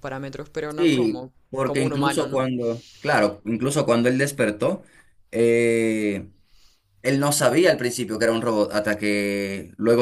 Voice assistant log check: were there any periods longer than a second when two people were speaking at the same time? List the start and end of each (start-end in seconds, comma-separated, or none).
0.8-2.4